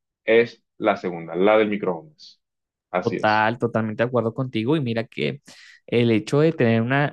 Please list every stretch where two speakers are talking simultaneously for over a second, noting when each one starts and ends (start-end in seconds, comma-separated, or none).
none